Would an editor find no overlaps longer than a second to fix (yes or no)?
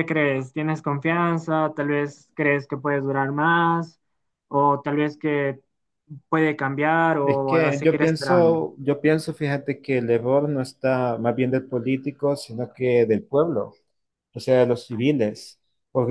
no